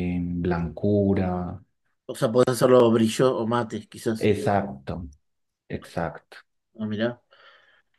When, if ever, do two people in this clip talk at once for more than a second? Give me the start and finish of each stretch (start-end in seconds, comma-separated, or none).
none